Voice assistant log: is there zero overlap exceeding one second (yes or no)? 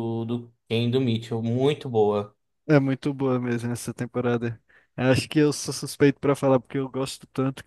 yes